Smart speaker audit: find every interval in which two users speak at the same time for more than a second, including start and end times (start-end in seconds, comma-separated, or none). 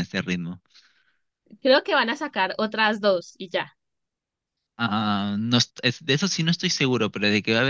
none